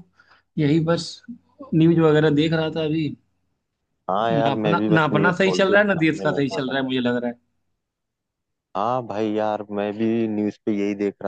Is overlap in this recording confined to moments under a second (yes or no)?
no